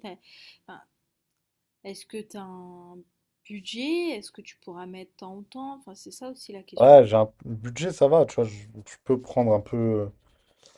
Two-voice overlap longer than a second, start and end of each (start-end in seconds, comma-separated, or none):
none